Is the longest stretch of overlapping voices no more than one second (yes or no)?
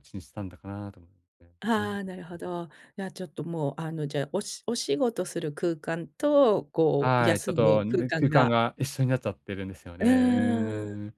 no